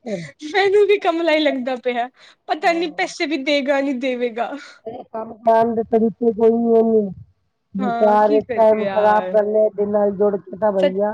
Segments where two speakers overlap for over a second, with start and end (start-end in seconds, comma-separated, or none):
7.8-9.3